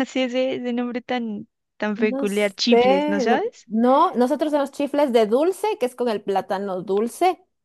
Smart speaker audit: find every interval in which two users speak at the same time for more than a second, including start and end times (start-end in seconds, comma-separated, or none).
2.0-3.7